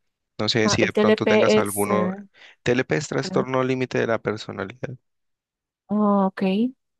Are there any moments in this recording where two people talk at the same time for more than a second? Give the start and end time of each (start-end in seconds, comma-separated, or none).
0.6-1.9